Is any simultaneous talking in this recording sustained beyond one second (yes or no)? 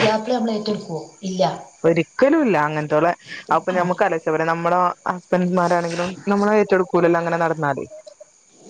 no